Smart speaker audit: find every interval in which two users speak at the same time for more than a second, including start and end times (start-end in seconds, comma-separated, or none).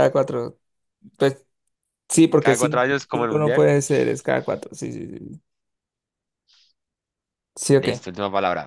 2.4-3.7